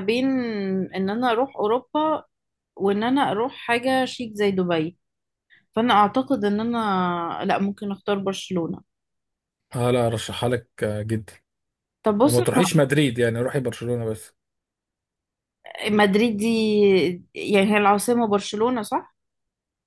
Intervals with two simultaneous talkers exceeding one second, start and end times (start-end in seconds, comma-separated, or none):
none